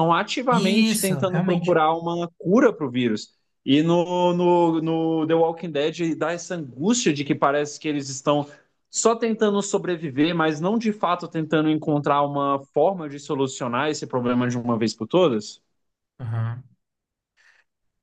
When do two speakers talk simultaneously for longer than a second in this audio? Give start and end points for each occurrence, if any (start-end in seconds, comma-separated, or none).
0.5-1.8